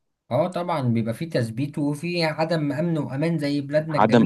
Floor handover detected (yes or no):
yes